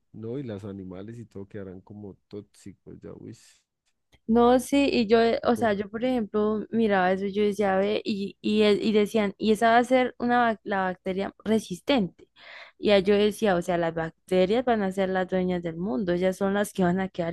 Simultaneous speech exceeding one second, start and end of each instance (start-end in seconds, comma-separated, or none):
none